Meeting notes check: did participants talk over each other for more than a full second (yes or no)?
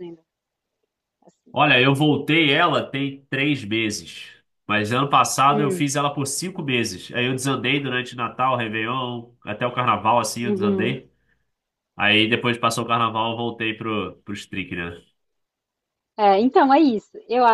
no